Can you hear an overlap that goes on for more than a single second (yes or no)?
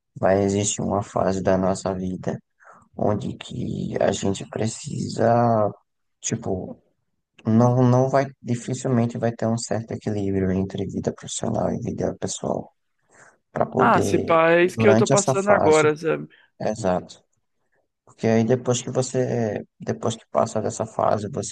yes